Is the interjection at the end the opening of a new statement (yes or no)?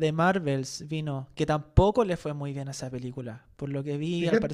no